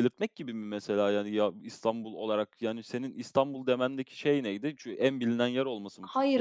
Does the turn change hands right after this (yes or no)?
yes